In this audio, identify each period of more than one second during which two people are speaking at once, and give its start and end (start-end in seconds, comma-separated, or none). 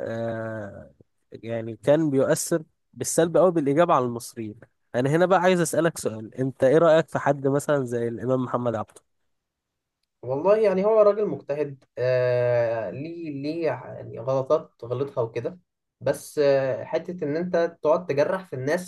none